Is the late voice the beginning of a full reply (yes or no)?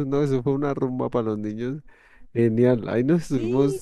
no